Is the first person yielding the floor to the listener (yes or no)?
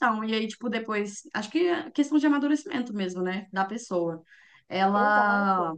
no